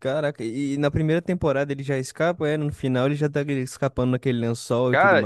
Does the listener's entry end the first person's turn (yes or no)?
yes